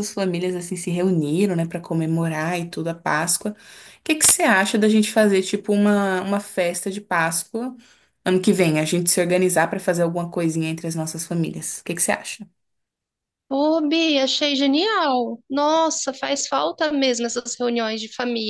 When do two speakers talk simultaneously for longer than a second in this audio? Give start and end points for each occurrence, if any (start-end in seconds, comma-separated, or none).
none